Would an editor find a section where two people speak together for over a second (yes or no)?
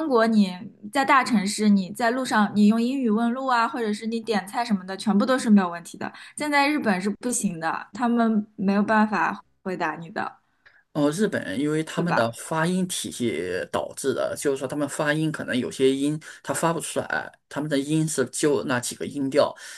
no